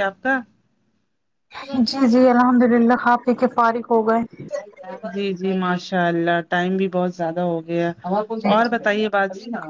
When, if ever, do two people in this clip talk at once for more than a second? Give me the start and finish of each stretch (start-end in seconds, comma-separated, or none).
none